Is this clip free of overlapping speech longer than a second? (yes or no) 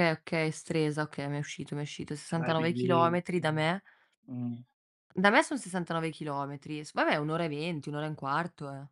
no